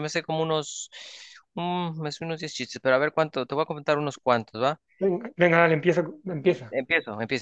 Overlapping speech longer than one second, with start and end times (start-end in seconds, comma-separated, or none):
none